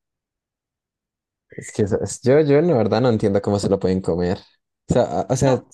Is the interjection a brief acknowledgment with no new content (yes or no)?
yes